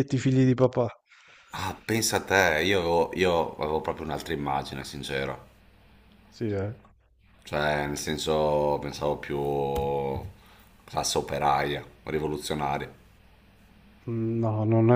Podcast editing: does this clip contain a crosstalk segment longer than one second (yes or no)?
no